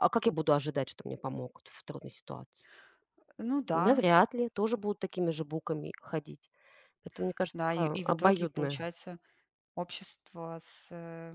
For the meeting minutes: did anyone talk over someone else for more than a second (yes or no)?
yes